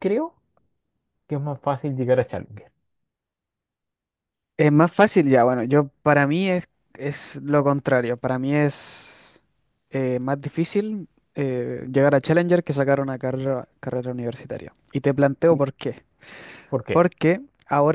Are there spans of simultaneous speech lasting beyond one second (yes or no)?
no